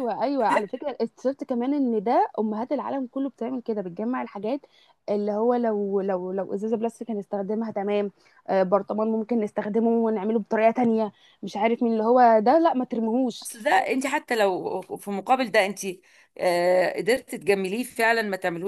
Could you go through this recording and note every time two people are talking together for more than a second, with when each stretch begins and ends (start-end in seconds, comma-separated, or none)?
none